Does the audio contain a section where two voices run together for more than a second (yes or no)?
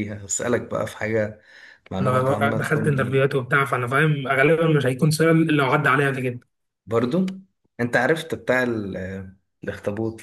yes